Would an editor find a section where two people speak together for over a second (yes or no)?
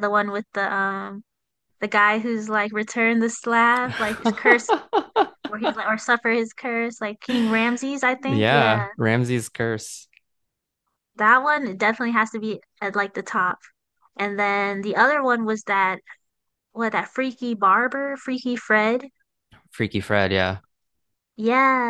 no